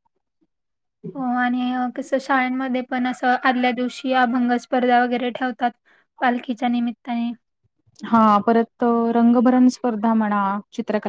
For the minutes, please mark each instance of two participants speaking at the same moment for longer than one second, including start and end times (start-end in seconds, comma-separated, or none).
none